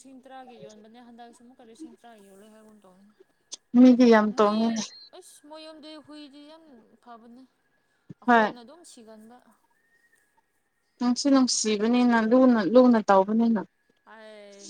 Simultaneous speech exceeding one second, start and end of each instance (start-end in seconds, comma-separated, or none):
none